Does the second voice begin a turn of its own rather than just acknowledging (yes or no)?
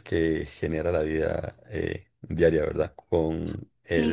yes